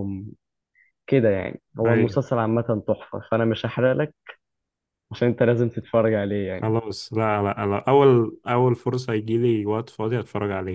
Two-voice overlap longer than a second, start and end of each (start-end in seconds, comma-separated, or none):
none